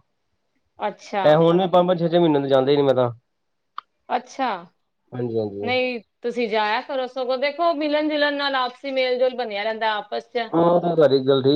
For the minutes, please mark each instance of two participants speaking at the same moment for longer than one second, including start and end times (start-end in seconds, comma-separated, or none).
none